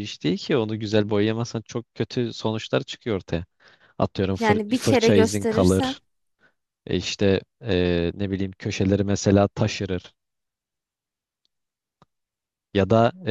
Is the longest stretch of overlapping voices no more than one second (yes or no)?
no